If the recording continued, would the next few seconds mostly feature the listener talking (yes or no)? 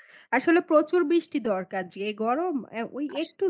no